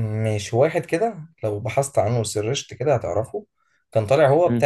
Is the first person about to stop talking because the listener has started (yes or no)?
no